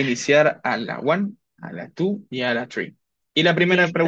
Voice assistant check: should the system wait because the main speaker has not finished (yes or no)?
yes